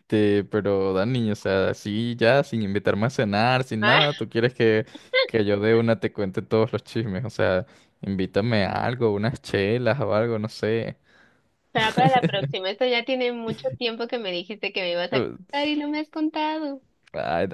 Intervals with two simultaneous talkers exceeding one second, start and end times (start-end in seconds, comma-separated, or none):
none